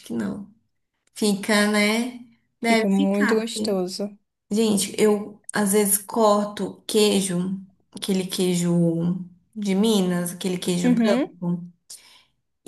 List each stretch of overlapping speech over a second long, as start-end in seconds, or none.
2.6-3.8